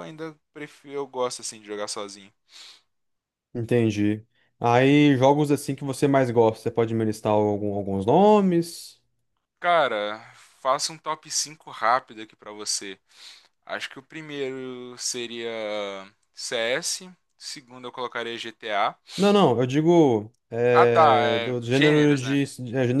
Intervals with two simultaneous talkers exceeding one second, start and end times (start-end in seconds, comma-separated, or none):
20.7-22.4